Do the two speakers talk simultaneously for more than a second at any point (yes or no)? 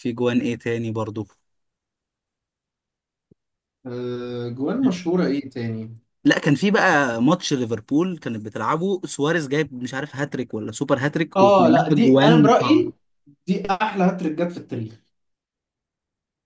yes